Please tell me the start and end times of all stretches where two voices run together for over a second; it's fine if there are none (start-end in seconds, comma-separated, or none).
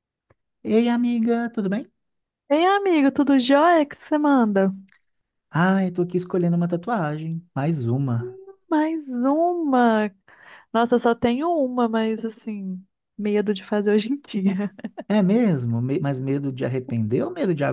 none